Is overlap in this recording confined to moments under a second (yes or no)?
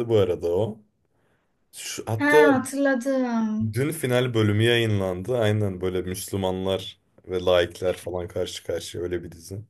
yes